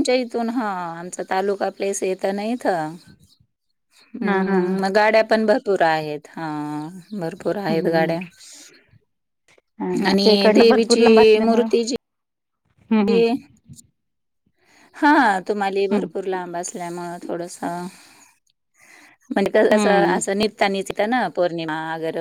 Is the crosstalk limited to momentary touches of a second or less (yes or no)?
no